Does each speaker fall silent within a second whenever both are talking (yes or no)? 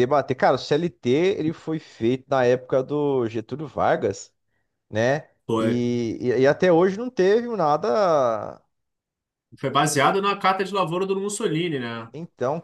yes